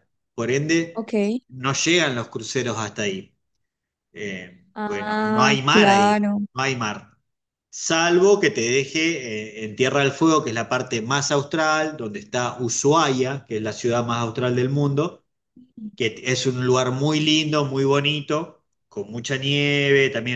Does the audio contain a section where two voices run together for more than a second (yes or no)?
yes